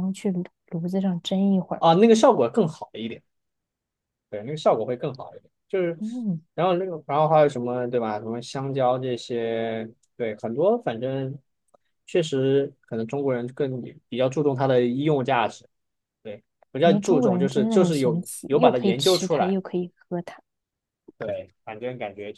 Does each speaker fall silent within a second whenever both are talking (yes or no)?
no